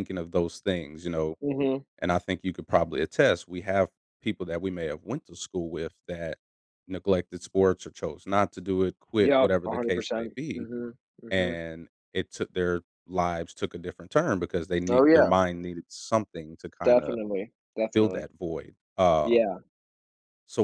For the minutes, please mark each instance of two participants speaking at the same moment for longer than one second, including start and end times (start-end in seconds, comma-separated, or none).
9.2-10.7